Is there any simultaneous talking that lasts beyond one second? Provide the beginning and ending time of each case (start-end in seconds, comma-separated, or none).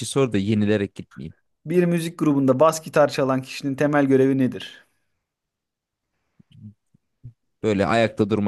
none